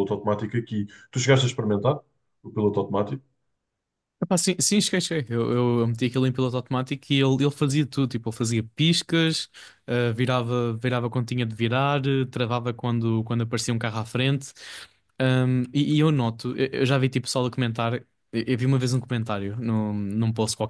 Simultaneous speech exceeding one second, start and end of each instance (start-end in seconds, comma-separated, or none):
none